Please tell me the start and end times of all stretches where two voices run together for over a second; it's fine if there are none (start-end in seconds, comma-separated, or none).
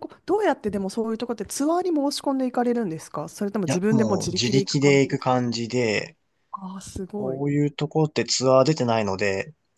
3.7-5.4